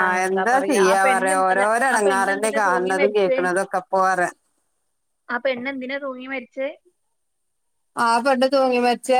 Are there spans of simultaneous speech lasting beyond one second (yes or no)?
yes